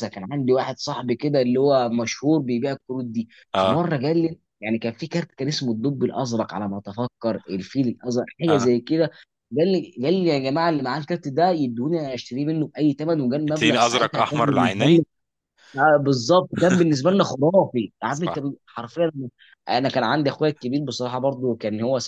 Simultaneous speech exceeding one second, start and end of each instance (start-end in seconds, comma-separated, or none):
13.5-15.0